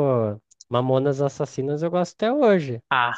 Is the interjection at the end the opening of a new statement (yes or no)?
yes